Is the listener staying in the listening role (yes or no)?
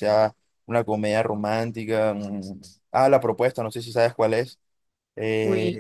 yes